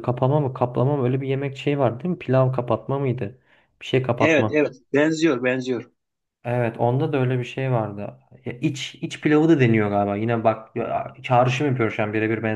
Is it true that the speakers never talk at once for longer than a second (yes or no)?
yes